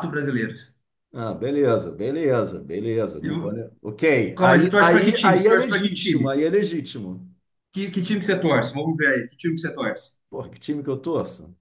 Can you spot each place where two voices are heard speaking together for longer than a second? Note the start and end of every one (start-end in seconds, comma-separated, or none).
4.4-6.3